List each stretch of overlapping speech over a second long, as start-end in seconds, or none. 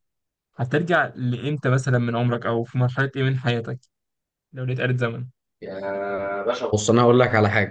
none